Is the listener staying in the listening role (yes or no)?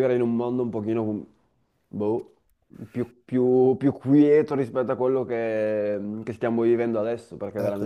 no